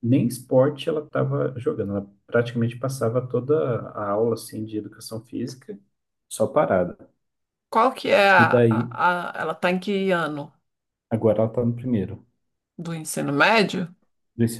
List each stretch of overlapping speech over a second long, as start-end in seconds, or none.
none